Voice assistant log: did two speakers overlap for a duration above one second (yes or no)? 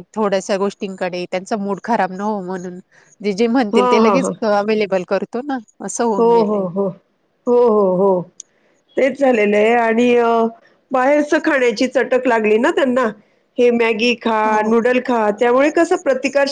no